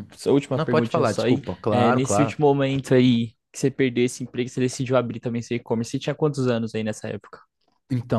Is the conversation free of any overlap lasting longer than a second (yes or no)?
no